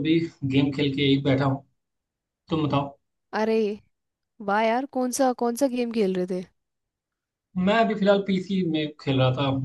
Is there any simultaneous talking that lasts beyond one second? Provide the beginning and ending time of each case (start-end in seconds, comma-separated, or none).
none